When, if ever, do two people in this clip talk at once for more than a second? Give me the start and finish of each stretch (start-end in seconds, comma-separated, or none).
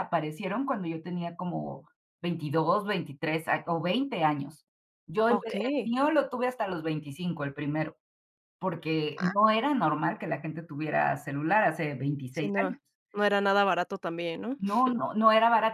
none